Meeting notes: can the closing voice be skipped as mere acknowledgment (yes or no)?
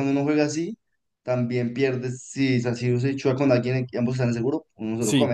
no